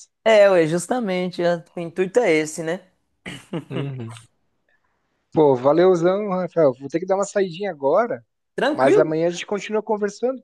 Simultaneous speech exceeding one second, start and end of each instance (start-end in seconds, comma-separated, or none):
none